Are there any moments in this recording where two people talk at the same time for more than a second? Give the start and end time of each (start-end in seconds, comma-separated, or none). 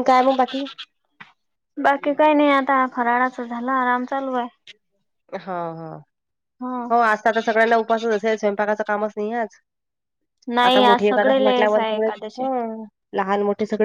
10.7-12.4